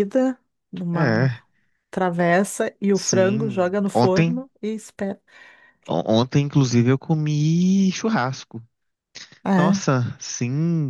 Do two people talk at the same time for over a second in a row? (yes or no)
yes